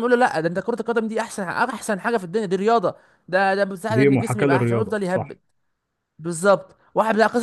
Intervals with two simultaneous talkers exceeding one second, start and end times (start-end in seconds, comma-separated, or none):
3.9-5.4